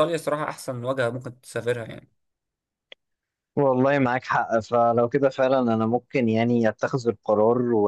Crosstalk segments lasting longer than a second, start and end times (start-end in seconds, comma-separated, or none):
none